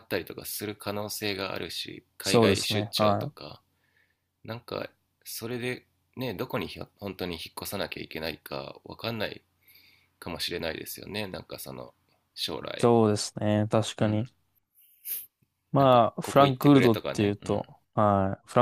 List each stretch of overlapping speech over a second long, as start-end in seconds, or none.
2.2-3.5, 15.8-17.6